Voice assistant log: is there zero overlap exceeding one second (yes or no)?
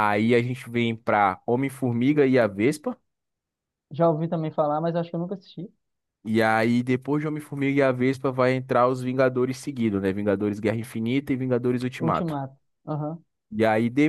yes